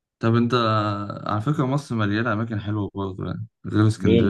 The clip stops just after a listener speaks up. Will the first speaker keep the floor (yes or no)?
no